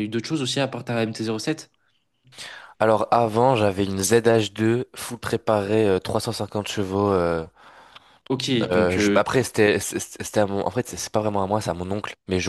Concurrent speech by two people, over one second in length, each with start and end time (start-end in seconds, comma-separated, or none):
none